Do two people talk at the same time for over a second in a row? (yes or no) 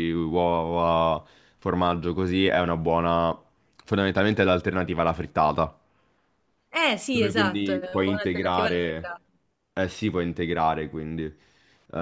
yes